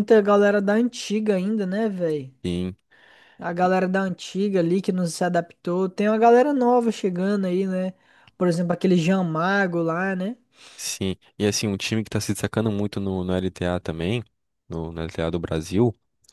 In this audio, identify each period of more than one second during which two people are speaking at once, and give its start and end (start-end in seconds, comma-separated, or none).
none